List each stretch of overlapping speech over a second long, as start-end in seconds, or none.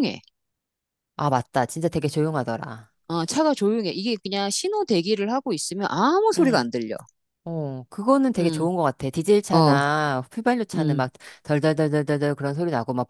none